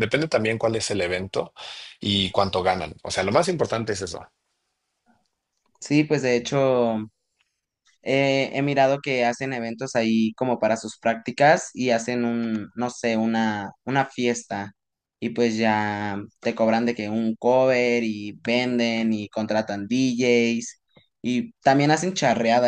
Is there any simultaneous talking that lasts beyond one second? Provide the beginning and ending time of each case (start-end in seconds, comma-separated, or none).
none